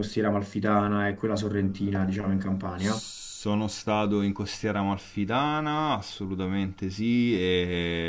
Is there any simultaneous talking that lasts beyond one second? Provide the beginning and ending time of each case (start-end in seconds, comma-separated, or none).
none